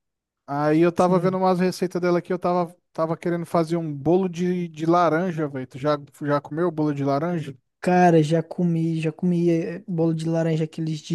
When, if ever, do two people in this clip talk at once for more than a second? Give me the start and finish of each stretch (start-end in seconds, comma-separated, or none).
none